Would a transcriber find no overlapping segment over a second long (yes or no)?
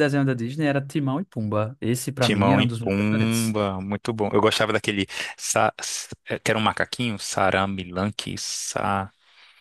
no